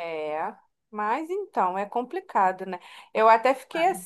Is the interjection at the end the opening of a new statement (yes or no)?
no